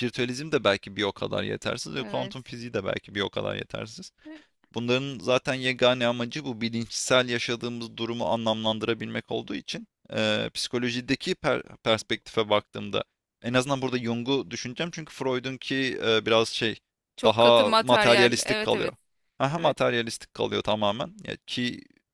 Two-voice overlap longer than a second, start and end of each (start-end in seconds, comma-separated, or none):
17.2-18.9